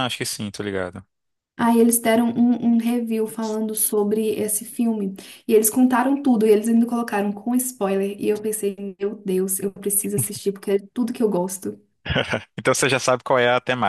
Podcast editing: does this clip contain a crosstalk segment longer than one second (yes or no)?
no